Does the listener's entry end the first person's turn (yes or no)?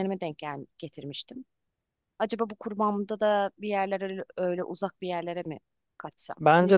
yes